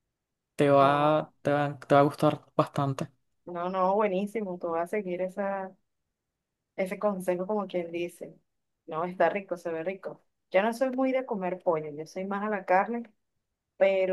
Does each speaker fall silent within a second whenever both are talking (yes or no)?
yes